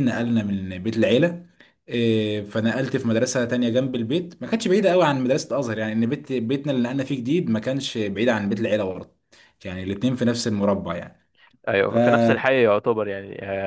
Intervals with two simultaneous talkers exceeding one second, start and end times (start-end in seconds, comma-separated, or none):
none